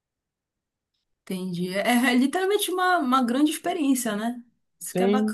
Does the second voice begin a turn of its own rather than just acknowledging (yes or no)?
yes